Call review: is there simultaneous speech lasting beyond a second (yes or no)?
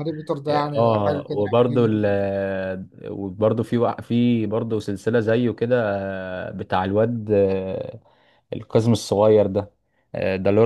yes